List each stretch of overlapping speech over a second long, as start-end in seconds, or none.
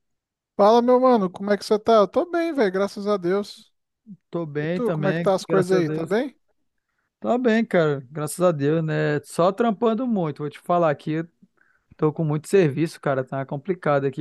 4.6-6.2